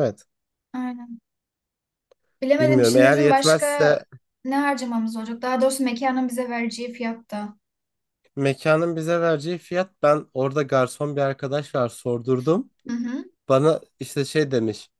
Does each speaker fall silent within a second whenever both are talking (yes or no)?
no